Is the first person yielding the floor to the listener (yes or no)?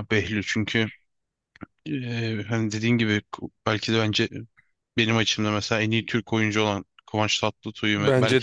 yes